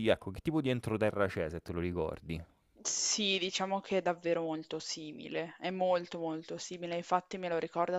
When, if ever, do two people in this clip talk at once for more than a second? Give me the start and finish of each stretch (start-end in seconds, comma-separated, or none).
none